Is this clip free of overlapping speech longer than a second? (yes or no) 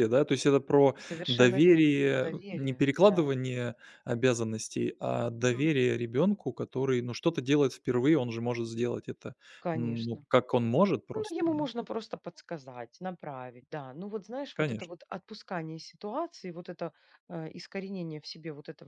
no